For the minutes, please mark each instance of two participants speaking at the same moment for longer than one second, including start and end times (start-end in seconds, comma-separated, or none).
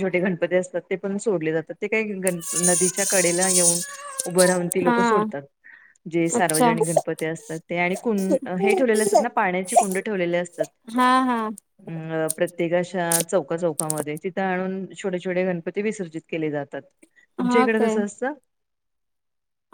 none